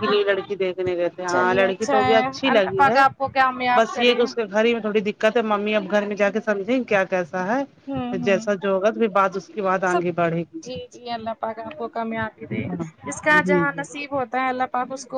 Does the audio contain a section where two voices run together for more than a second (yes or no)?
yes